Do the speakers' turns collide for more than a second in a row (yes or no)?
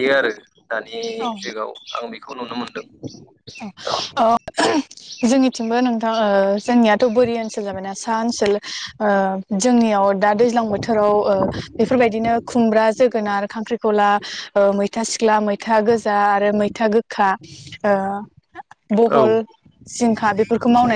no